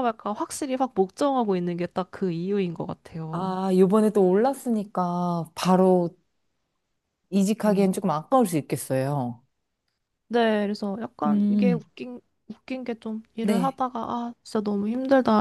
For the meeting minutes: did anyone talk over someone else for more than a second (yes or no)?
no